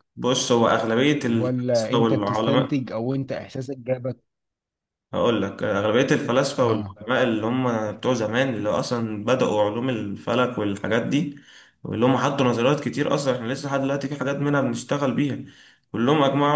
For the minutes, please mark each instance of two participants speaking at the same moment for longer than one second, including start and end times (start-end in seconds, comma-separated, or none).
1.3-2.7